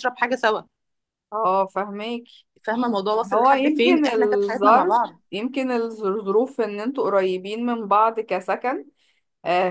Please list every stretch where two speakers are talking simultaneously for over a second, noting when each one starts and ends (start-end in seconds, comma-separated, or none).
3.3-4.9